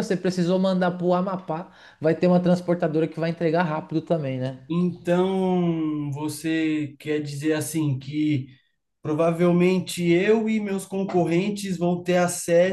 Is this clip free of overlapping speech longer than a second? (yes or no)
yes